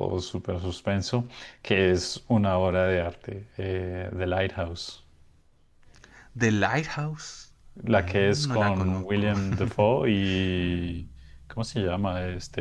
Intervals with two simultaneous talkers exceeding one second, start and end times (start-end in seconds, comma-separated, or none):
8.0-9.3